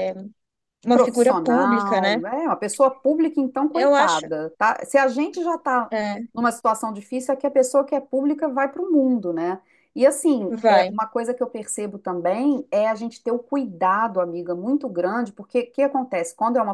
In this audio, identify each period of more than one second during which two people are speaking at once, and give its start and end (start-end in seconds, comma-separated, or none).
0.9-2.2